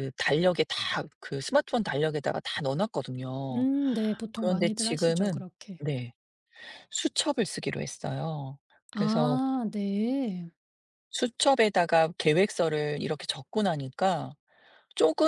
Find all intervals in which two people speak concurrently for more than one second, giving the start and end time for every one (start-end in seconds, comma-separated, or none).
4.3-5.8